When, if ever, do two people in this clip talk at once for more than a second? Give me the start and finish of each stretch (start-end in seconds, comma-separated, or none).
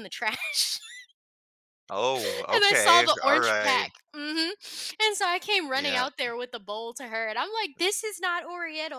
2.5-3.9